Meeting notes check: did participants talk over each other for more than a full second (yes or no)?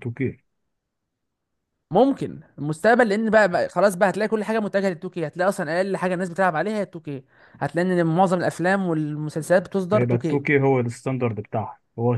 no